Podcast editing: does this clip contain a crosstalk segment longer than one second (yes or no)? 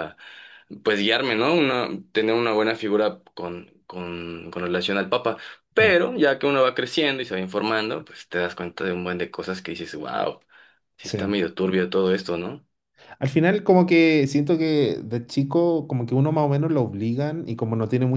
no